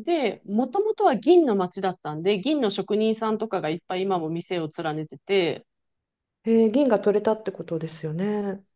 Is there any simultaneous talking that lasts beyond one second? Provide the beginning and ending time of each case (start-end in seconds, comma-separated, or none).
none